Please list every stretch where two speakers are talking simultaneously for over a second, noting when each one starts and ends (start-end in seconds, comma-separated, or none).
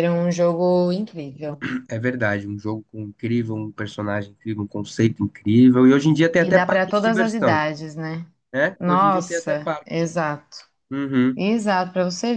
6.4-7.6, 8.8-10.1